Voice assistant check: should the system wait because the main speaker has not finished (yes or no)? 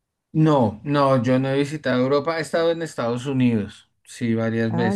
no